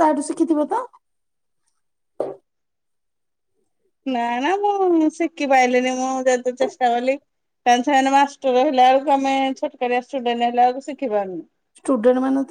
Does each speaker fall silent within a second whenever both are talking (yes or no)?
yes